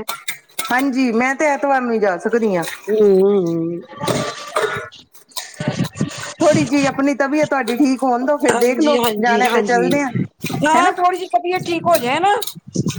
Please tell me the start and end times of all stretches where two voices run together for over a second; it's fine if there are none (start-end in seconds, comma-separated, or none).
8.5-9.9